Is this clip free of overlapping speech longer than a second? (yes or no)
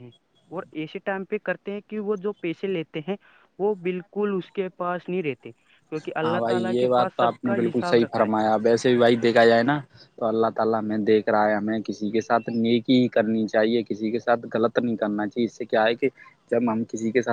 no